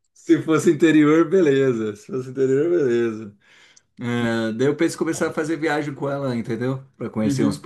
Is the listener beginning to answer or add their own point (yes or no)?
no